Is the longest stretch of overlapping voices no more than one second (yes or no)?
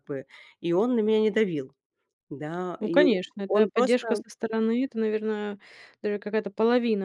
no